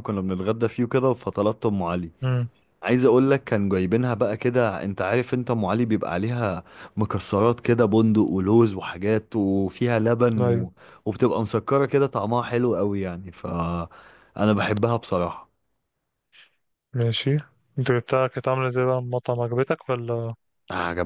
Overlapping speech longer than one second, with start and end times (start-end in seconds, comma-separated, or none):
none